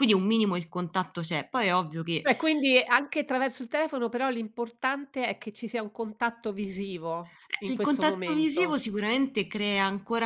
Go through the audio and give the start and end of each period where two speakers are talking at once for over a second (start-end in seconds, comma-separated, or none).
7.6-8.8